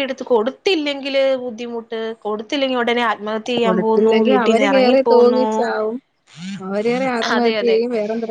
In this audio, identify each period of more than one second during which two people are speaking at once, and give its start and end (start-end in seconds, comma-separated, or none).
3.6-5.5